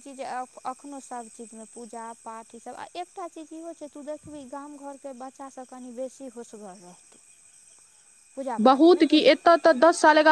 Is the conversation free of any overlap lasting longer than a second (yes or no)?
yes